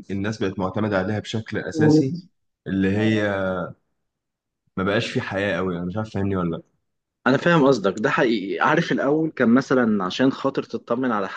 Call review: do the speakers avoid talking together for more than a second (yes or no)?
yes